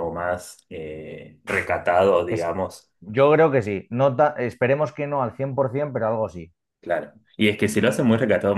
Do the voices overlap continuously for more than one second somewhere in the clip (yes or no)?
no